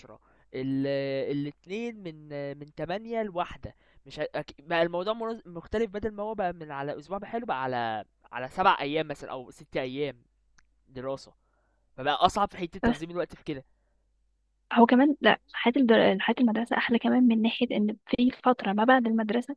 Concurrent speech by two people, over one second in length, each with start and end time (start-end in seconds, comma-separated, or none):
none